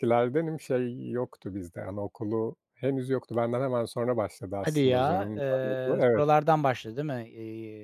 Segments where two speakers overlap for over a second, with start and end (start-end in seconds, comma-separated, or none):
4.6-6.2